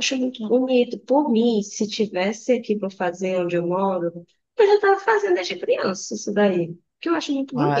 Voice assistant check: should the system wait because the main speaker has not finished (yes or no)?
no